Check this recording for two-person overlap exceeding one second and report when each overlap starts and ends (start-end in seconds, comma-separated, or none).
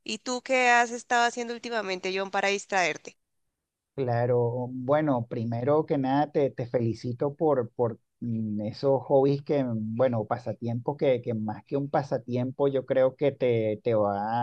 none